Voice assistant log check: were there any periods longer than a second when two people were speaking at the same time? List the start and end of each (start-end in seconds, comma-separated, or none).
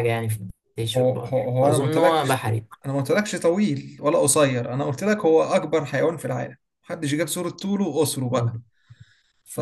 1.0-2.4